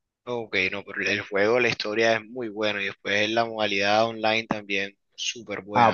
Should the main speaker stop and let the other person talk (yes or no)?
yes